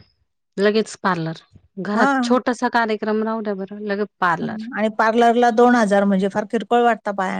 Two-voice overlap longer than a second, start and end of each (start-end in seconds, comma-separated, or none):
none